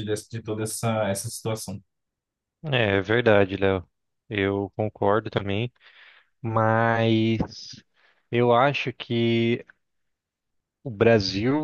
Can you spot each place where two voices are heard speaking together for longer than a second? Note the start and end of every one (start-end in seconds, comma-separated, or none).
none